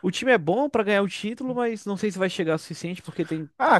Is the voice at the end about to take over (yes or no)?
yes